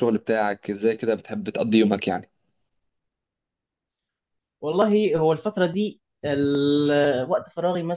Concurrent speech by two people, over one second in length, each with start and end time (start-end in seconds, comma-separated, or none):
none